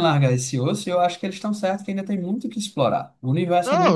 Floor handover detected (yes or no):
yes